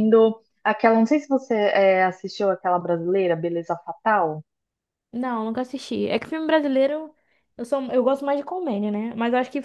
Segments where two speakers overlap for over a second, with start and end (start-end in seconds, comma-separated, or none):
none